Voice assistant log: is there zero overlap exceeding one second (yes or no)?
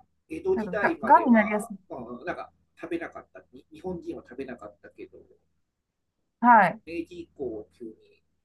no